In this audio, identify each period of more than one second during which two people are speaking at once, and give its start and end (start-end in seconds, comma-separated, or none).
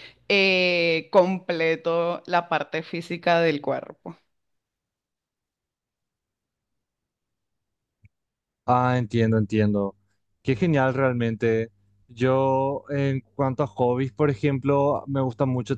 none